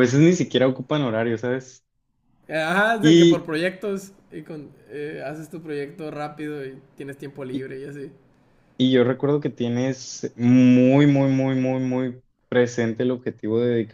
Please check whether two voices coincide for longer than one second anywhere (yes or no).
no